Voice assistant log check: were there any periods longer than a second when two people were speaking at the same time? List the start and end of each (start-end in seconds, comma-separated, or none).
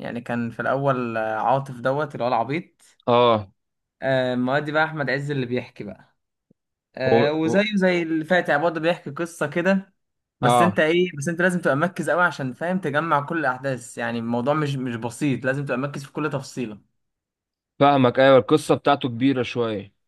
none